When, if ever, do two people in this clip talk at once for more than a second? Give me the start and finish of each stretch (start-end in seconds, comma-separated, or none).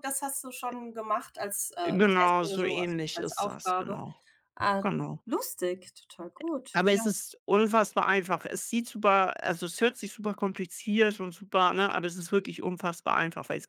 1.8-4.0